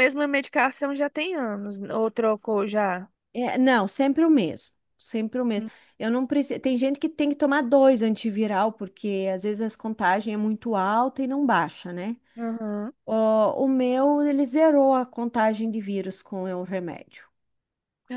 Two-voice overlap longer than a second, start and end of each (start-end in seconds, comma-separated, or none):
none